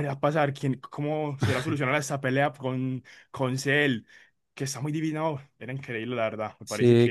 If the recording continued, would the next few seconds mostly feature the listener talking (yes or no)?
yes